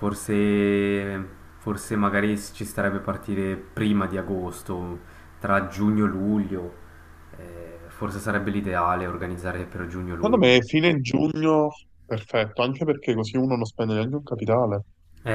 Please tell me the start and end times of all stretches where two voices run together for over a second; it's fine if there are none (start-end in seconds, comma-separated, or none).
none